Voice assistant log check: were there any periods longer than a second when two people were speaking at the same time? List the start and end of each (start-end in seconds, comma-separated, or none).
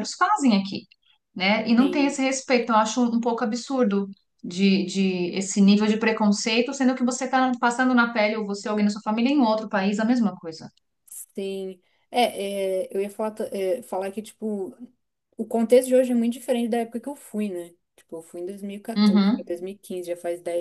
none